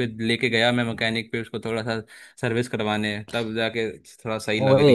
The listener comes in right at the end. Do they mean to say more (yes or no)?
yes